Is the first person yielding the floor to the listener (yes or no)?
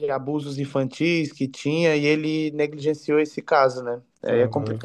yes